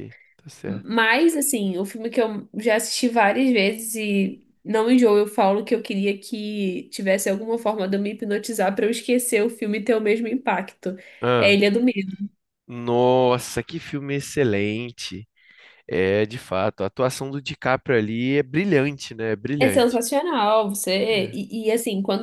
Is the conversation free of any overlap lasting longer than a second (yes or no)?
yes